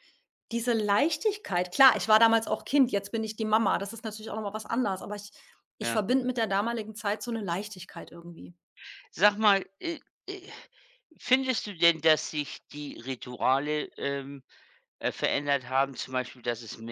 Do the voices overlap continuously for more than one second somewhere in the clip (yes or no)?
no